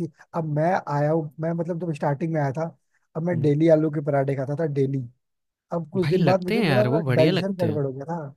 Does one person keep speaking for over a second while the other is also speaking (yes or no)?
yes